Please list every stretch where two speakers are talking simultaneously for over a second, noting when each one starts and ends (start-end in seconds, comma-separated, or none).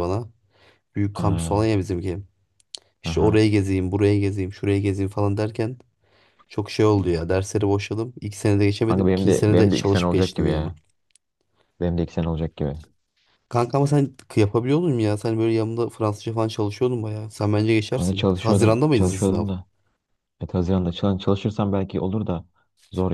8.9-10.6, 17.9-19.4